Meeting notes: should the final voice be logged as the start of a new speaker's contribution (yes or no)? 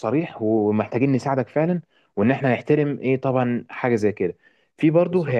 no